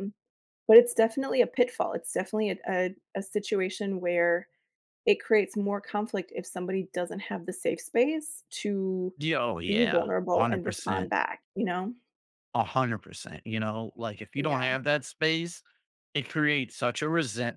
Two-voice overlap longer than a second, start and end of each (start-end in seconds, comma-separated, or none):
9.7-11.1